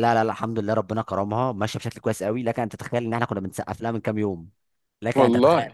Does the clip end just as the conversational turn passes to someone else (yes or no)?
no